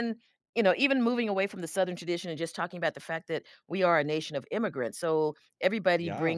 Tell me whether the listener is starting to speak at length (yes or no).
no